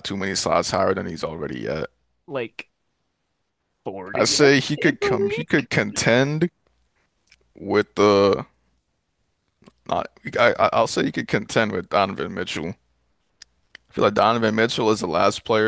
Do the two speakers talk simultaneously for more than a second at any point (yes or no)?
yes